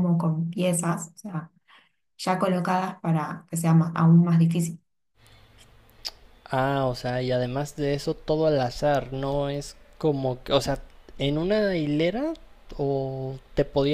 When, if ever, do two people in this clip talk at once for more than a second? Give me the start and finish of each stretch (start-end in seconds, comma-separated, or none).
none